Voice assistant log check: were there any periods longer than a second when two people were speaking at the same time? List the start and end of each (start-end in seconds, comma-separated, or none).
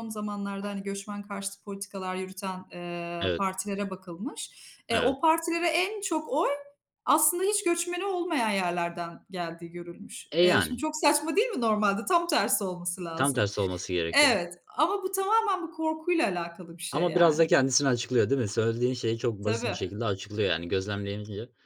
none